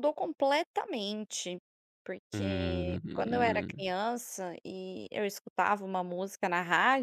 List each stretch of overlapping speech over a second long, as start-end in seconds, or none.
2.3-3.8